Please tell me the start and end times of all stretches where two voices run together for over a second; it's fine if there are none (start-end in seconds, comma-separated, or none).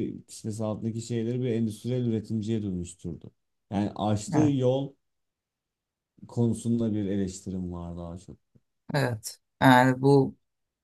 none